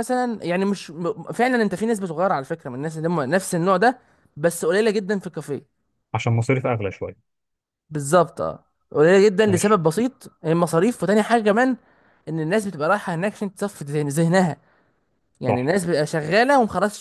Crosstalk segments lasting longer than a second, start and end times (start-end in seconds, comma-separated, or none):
none